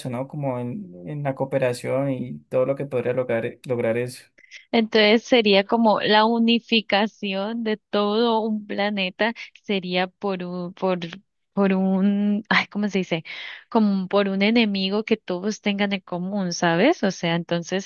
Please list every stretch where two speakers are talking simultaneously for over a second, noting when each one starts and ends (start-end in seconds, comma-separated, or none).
none